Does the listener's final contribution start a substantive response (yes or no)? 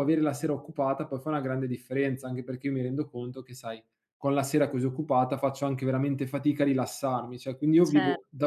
no